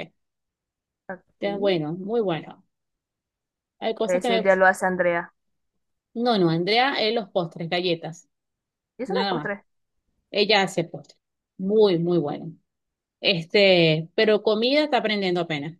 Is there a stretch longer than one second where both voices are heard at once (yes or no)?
no